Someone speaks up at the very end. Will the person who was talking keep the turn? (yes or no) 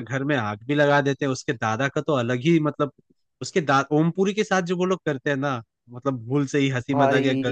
yes